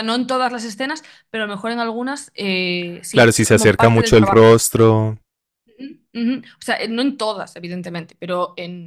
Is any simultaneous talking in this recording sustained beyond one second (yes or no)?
yes